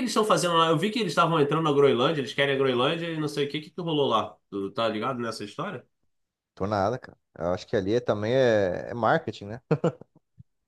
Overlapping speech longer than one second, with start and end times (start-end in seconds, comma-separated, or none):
none